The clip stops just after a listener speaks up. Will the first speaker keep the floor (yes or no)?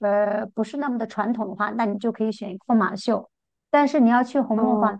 yes